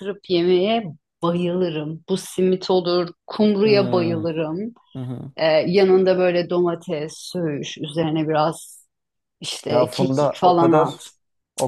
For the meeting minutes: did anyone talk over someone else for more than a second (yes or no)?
yes